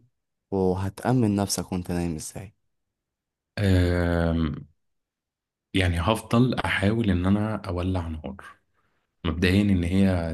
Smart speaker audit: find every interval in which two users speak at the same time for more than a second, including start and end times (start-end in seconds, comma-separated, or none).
none